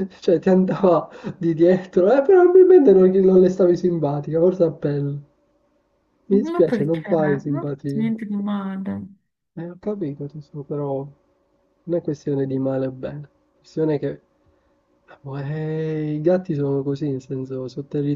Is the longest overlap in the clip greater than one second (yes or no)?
yes